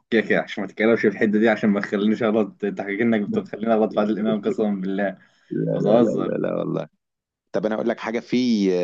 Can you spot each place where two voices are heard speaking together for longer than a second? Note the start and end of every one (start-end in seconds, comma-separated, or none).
none